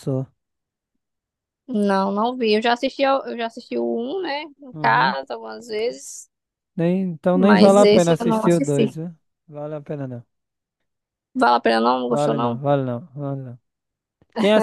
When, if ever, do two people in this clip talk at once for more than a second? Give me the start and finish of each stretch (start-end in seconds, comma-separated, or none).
7.3-9.0